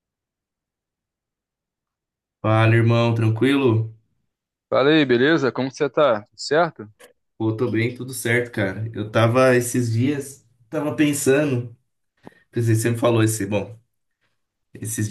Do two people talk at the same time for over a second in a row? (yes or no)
no